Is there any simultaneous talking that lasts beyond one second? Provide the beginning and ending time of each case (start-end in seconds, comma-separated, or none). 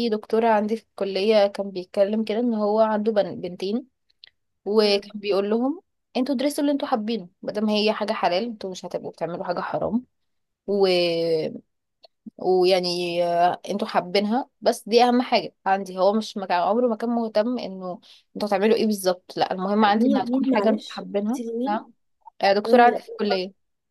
20.0-21.9